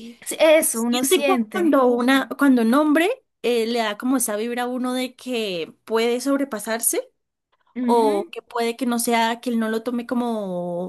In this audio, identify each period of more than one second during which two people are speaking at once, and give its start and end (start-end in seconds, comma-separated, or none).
0.6-1.8